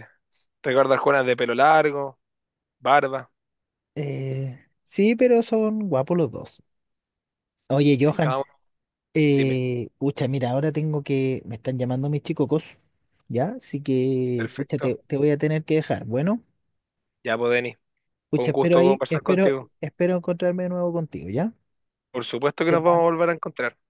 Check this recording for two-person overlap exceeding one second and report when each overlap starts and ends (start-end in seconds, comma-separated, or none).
18.3-19.7